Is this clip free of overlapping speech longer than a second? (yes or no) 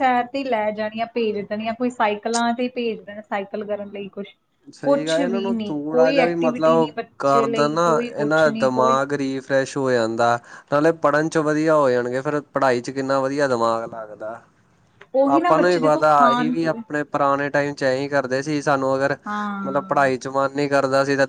no